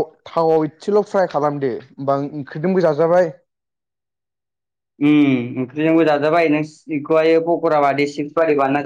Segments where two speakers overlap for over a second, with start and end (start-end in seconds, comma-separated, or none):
none